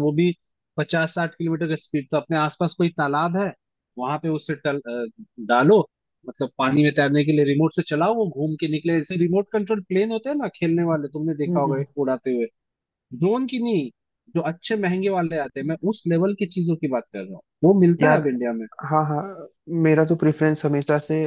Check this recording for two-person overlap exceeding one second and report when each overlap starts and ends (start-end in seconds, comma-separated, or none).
none